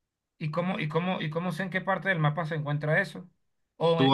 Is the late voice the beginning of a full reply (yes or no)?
yes